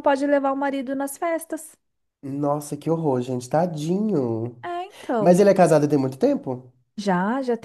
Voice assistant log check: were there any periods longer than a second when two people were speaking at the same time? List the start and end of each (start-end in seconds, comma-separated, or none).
none